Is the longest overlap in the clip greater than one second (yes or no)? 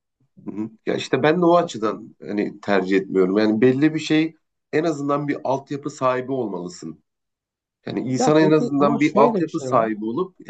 yes